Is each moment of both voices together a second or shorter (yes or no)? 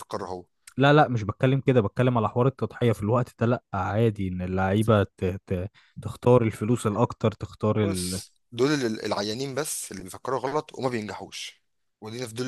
yes